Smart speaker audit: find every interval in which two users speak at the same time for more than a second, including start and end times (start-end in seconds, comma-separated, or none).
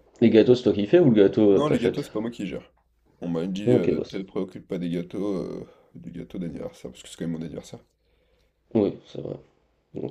none